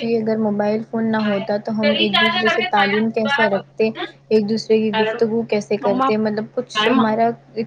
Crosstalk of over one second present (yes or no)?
yes